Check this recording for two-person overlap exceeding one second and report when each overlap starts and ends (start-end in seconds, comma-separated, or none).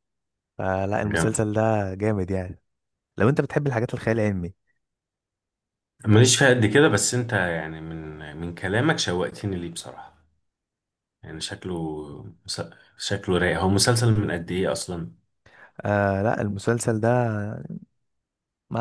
none